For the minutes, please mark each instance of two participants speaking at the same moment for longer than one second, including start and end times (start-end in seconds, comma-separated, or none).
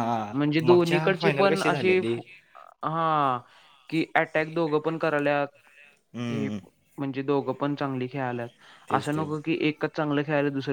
0.7-2.0